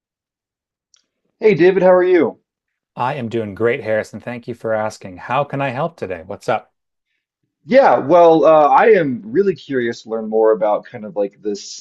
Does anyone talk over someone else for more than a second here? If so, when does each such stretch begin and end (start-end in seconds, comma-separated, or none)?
none